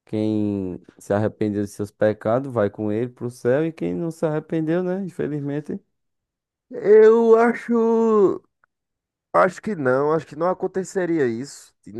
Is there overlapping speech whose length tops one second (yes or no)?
no